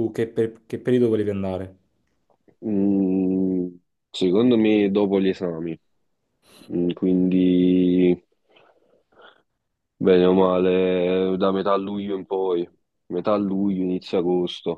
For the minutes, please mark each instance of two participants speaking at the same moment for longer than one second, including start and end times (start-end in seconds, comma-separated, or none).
none